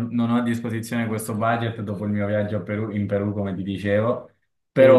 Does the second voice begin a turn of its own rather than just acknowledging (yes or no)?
no